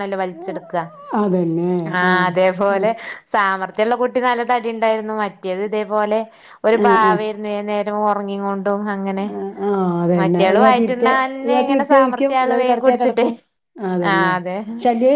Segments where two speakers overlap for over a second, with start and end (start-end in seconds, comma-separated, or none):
10.2-13.3